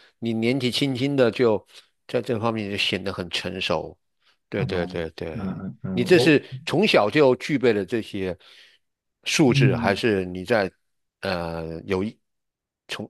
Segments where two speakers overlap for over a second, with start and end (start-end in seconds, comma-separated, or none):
4.5-6.4